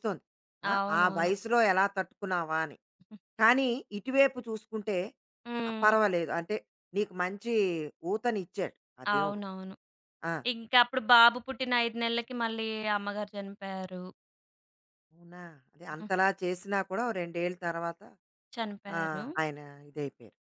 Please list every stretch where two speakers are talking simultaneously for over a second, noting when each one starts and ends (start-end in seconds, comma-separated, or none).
none